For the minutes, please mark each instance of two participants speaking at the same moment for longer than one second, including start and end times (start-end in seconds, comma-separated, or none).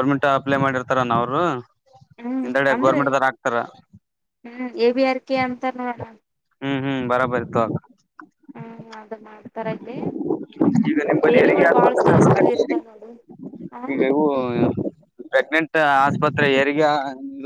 11.0-12.7